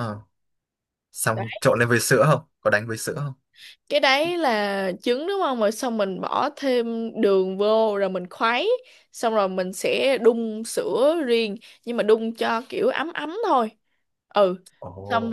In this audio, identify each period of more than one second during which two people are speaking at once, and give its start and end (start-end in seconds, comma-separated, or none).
none